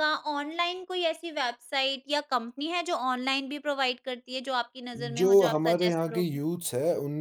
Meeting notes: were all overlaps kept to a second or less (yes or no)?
no